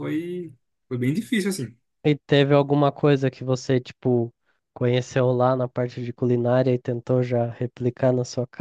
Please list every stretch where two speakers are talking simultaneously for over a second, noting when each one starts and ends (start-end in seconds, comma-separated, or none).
none